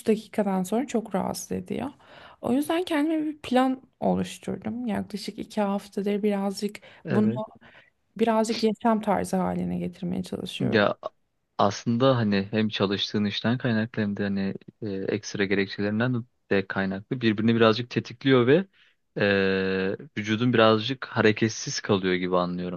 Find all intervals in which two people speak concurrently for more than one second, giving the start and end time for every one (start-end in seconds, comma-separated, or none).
none